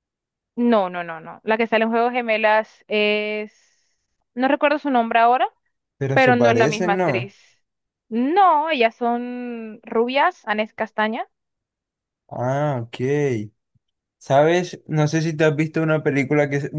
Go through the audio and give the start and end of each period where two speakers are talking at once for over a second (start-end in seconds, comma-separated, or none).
6.1-7.3